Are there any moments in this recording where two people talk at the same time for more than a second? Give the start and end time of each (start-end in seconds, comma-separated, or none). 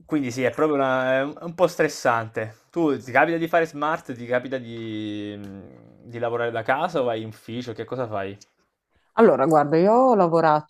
none